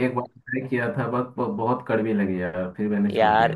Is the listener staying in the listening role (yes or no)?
no